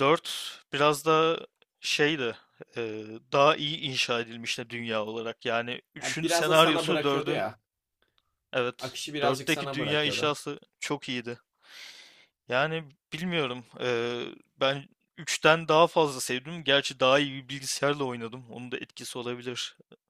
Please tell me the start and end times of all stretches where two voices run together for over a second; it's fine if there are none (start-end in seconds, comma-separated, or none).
6.0-7.5, 8.8-10.4